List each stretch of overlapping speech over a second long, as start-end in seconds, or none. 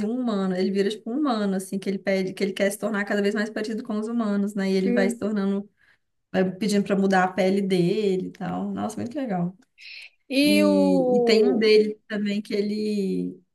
10.4-11.7